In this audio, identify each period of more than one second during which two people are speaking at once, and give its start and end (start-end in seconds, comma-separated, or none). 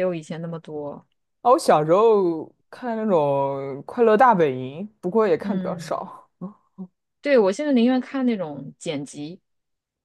none